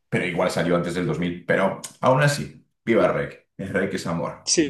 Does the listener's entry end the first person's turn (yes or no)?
yes